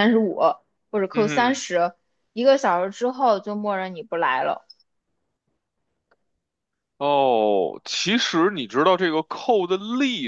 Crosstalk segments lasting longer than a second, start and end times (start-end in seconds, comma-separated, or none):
none